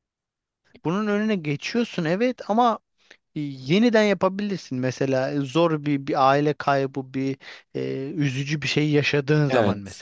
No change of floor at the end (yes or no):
no